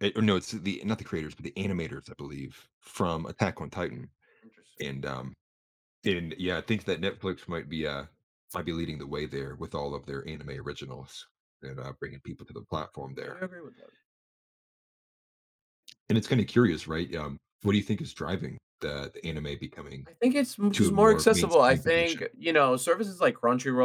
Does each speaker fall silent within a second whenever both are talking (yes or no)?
no